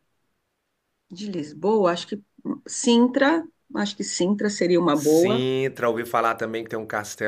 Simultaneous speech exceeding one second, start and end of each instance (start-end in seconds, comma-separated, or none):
none